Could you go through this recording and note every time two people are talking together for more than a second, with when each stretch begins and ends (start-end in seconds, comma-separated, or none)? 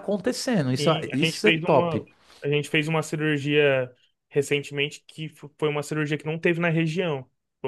0.8-2.0